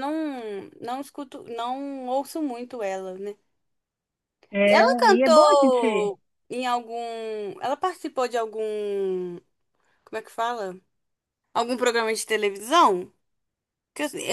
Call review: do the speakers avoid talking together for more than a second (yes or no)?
no